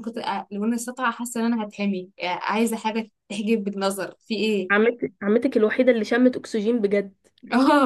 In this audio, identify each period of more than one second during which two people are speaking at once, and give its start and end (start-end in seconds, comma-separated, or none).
none